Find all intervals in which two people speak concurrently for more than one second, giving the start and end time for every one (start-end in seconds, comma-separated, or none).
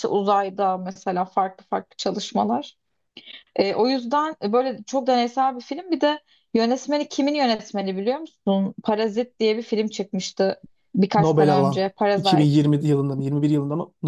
11.2-12.6